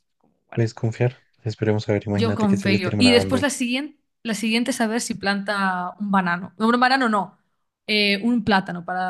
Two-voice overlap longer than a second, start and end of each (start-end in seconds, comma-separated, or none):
2.1-3.5